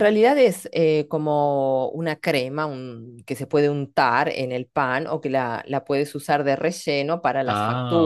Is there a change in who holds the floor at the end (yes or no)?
no